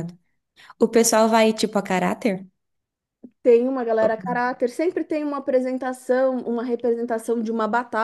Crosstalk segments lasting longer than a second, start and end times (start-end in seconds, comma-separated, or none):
none